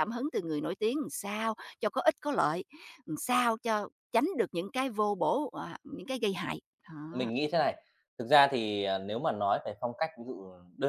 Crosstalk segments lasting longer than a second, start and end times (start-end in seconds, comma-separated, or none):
none